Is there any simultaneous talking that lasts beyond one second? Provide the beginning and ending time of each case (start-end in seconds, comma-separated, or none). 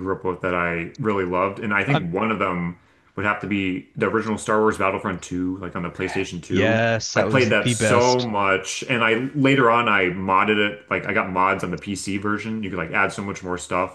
6.5-8.3